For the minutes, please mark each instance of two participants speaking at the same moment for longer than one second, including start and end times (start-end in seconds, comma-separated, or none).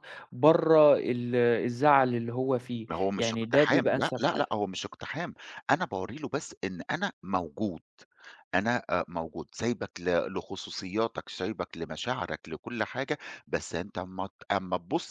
2.9-4.4